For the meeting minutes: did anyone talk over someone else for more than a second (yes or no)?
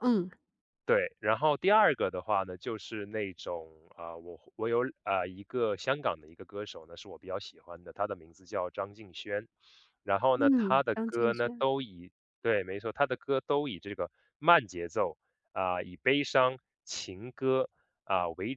yes